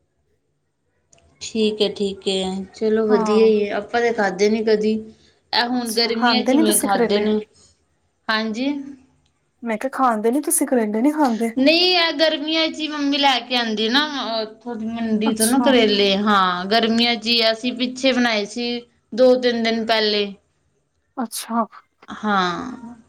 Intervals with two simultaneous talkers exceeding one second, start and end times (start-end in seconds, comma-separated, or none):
5.8-7.3